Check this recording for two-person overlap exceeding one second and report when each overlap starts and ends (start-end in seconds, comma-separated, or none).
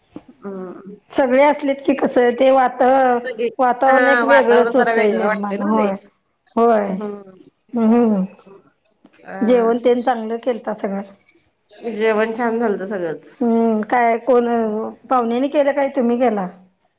3.9-5.9